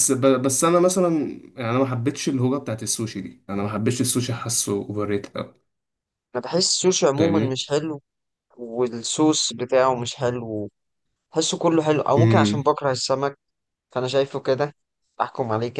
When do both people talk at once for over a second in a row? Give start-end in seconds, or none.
none